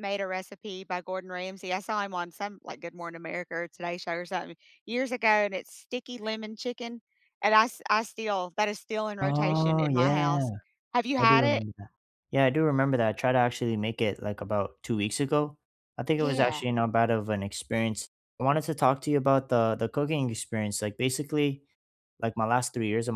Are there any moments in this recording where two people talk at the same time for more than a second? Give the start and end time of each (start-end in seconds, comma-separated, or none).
9.2-10.4